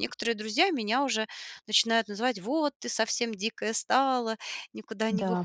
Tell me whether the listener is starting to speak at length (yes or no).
no